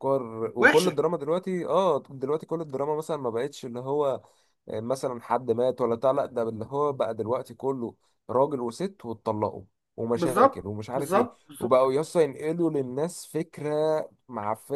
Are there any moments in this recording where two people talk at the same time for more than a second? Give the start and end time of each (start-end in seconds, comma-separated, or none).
10.1-11.8